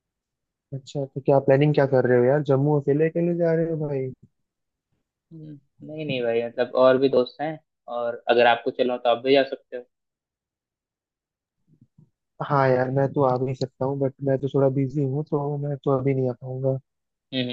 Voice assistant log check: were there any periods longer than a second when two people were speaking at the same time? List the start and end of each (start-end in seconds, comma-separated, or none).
none